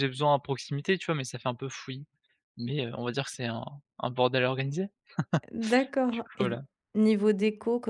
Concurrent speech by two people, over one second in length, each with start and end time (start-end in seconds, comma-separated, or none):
none